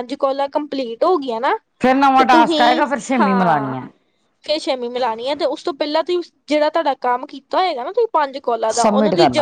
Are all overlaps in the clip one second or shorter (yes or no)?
no